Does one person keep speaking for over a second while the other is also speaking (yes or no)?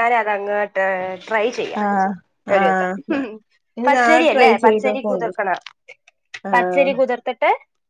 yes